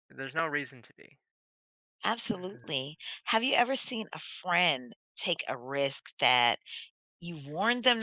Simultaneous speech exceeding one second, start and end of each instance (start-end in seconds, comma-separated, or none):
none